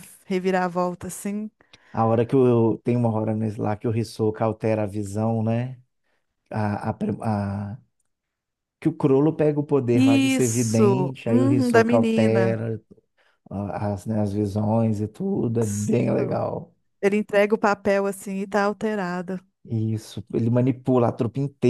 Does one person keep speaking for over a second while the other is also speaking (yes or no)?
yes